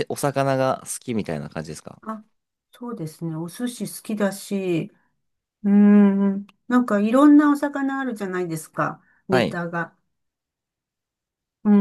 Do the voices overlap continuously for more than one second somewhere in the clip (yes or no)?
no